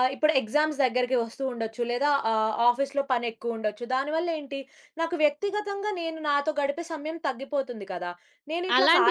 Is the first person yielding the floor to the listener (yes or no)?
yes